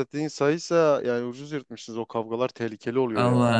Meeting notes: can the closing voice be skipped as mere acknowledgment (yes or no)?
no